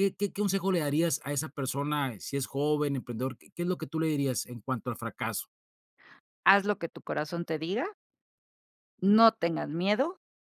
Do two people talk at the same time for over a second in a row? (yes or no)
no